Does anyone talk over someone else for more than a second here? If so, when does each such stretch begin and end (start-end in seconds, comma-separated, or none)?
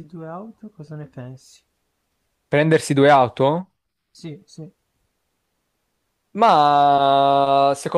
none